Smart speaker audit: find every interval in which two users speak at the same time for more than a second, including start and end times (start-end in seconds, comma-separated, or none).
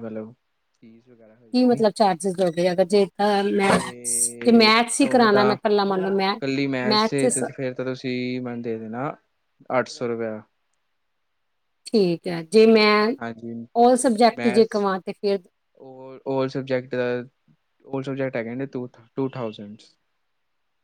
3.6-5.5